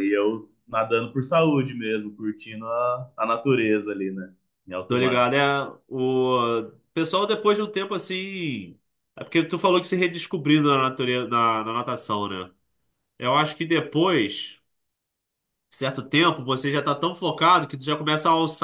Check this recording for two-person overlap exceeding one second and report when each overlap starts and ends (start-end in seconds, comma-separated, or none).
none